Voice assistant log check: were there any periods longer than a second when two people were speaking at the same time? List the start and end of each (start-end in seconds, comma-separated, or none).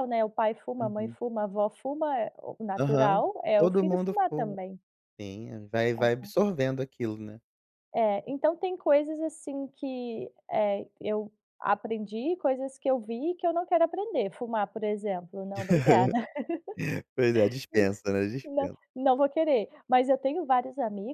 2.8-4.6